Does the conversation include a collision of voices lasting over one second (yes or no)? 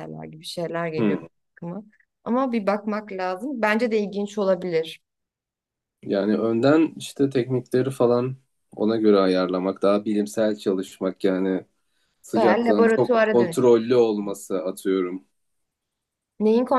yes